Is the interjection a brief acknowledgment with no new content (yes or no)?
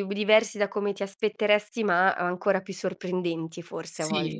no